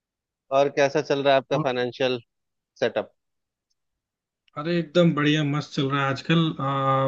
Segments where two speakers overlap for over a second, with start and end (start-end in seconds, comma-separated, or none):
none